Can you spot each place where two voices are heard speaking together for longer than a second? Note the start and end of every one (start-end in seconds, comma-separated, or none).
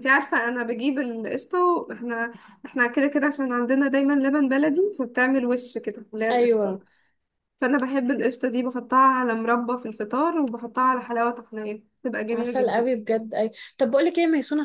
none